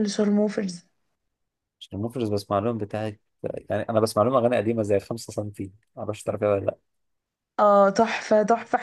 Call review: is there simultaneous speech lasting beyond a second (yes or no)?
no